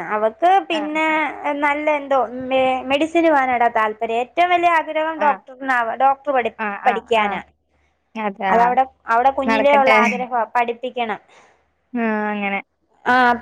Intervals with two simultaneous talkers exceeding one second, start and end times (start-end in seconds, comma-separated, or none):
none